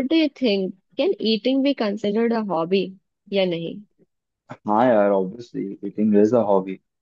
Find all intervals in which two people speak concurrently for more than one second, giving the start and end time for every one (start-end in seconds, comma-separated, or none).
none